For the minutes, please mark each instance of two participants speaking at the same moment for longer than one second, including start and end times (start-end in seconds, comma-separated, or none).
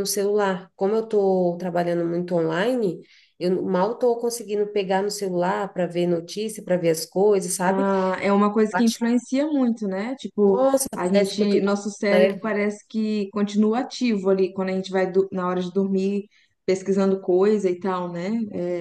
10.5-12.5